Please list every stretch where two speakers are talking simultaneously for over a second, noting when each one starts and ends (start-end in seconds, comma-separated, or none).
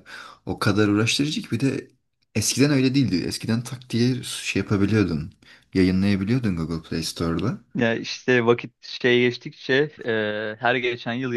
none